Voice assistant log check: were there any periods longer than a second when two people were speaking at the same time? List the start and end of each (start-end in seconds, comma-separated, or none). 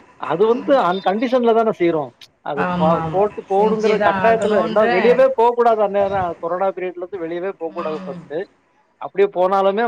2.7-4.9